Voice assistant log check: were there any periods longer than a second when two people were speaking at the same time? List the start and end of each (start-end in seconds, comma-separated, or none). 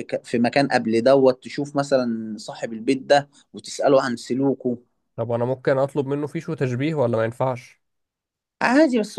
none